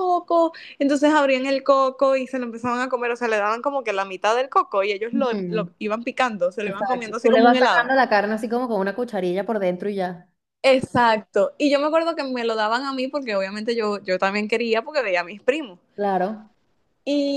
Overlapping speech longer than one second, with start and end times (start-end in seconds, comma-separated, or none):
6.6-7.9